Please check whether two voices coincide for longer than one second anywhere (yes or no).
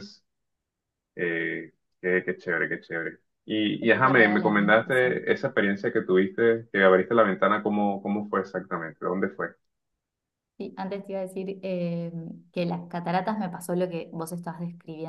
yes